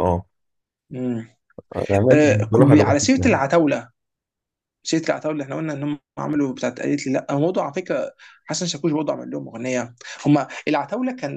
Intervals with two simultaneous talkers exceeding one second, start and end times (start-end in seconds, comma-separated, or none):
2.1-3.4